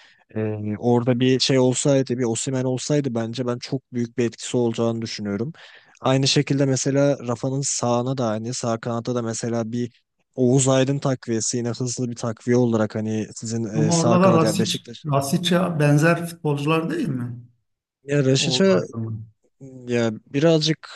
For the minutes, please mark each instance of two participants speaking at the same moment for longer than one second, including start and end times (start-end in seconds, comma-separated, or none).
13.8-15.1